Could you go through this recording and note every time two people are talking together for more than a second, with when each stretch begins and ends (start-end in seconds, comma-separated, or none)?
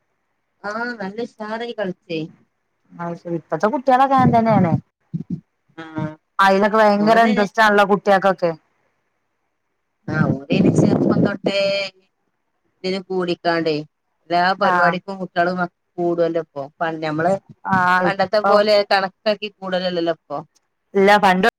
none